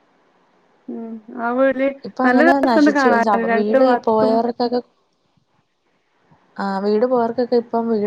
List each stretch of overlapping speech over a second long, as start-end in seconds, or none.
2.3-4.3